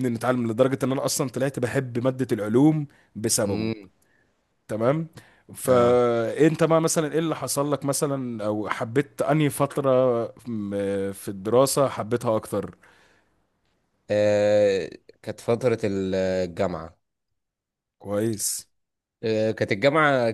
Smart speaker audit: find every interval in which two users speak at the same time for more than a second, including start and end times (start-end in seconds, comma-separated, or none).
none